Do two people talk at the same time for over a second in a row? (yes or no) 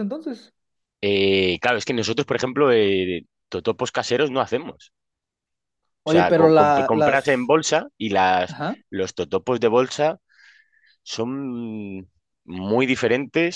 yes